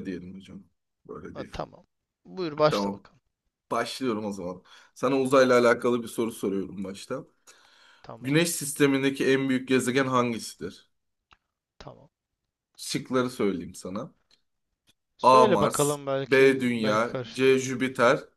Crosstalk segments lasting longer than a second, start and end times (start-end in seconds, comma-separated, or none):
15.2-17.7